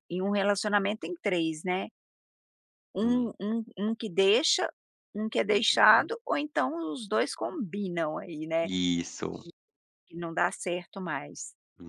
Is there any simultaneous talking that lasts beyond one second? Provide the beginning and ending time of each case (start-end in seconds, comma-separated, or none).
none